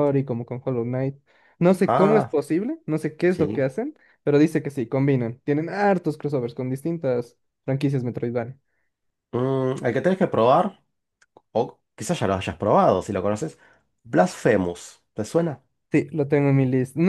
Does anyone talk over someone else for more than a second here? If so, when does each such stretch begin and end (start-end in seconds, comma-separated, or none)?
none